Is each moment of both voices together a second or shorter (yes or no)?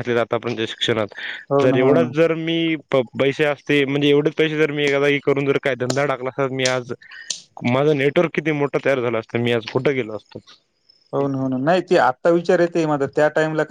yes